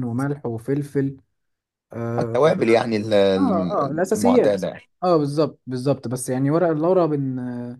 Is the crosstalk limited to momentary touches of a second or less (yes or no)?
no